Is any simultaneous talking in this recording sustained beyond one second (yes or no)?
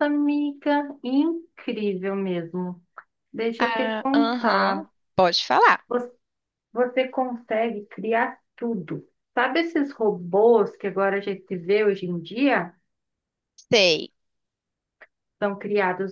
yes